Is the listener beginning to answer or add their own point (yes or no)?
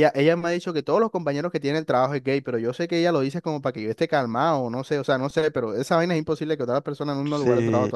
yes